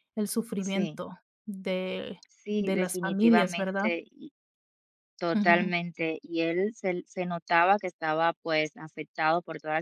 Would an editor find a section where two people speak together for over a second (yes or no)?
yes